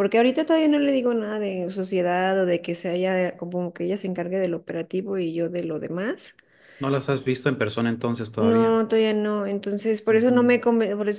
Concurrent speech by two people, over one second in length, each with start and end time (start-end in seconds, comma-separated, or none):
none